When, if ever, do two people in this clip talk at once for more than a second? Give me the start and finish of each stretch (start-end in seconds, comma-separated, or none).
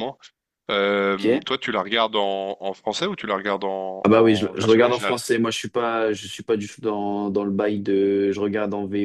4.0-5.2